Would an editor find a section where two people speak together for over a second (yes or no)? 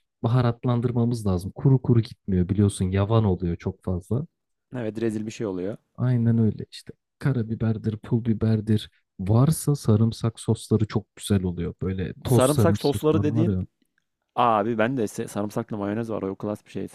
yes